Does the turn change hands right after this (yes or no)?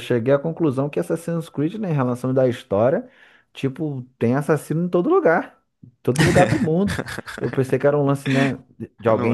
no